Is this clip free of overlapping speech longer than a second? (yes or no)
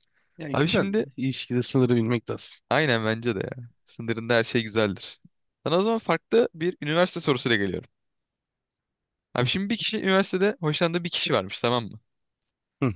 yes